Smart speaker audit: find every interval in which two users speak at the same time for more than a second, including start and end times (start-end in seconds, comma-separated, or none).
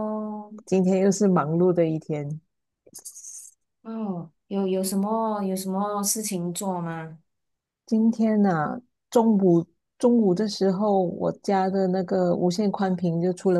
none